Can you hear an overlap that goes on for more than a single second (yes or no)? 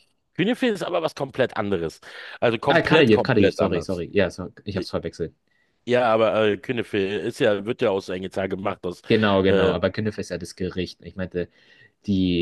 yes